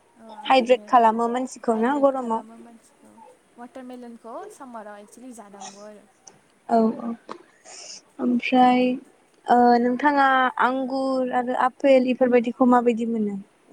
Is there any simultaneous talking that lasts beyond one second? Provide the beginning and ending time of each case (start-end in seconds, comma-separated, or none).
1.7-3.1